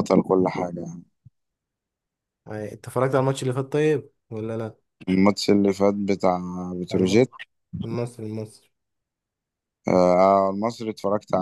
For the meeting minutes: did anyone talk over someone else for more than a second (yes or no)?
no